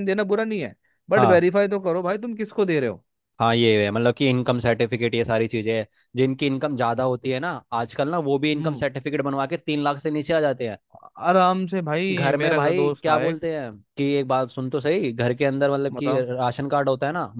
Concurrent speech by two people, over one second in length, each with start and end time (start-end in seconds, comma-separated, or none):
12.1-13.4